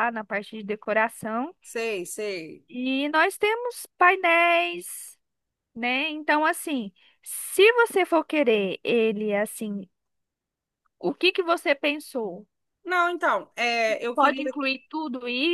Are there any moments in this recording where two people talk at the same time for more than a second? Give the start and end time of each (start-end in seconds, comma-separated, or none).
none